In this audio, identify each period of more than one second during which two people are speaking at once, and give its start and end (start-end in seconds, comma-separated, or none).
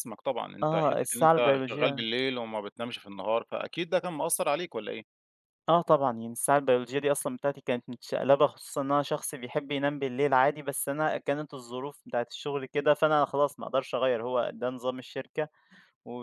0.6-2.0